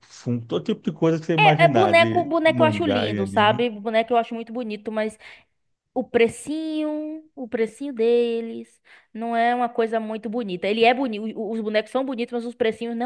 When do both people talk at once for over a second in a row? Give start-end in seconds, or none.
1.4-3.6